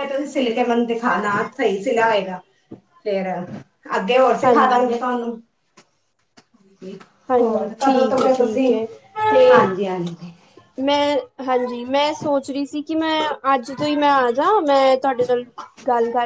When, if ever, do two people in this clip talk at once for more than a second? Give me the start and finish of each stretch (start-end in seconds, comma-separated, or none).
7.4-8.7